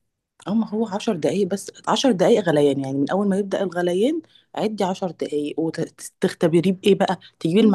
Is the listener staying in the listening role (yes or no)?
yes